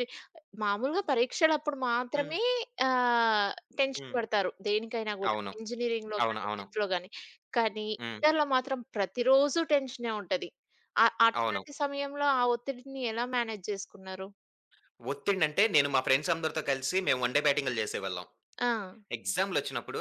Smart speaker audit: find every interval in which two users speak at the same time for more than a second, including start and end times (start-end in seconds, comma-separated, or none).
none